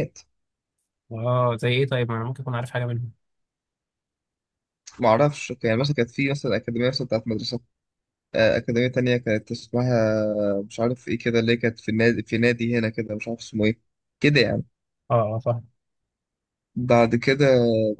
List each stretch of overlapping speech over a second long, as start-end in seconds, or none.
none